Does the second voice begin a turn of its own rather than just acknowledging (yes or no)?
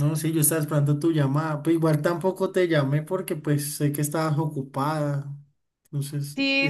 yes